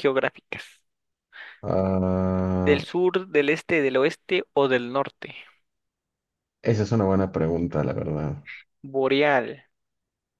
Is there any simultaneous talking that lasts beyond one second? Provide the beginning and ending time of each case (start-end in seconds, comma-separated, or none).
none